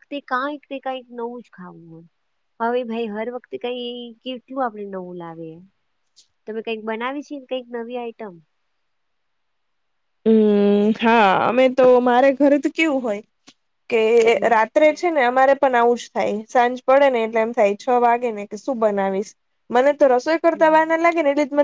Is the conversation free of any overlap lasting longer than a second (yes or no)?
yes